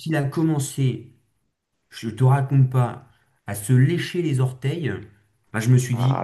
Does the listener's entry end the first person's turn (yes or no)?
no